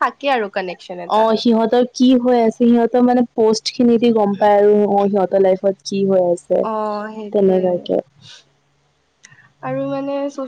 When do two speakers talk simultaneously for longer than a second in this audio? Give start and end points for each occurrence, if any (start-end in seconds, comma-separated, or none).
none